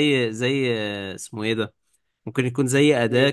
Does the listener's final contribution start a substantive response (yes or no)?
no